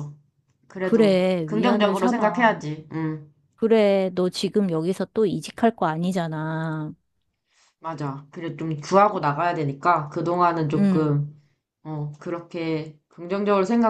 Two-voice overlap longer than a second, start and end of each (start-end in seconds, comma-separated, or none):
0.8-2.6